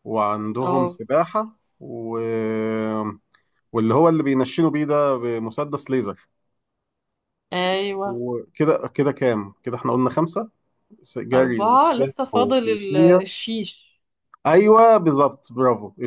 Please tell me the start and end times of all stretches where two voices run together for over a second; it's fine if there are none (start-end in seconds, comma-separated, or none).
11.3-13.2